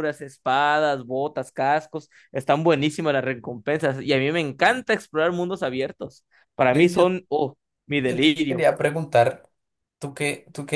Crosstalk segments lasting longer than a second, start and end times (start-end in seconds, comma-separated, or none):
none